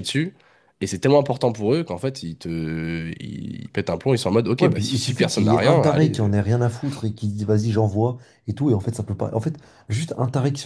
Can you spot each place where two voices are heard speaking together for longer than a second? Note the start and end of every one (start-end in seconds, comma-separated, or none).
4.6-6.3